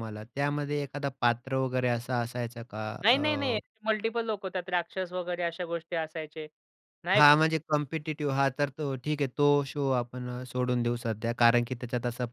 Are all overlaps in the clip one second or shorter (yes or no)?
yes